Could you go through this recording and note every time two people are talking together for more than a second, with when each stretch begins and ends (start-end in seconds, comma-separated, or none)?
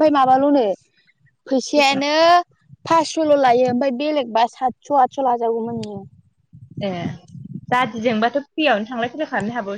none